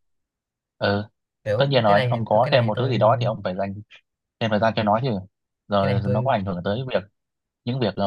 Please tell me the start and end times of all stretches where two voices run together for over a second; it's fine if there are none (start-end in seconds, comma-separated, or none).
1.6-3.0